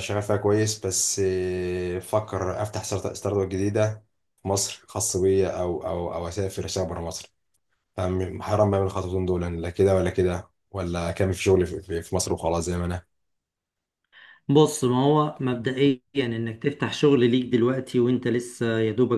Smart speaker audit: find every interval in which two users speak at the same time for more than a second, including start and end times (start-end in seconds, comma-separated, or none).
none